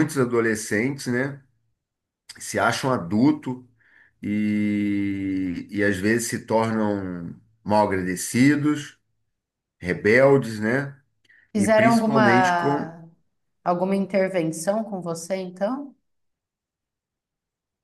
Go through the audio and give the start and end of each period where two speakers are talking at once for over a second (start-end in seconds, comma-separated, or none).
11.6-12.9